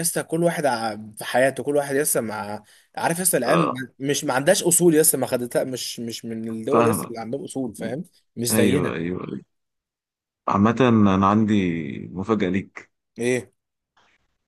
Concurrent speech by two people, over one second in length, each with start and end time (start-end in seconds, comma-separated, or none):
none